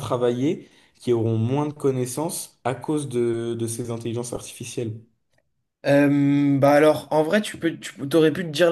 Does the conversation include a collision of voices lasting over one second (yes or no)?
no